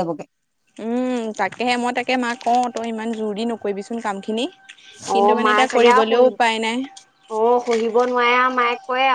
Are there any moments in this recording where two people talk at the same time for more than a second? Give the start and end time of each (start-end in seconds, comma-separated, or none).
5.1-6.8